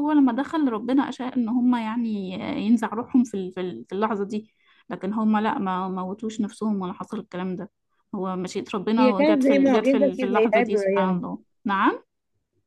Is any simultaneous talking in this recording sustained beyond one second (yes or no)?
yes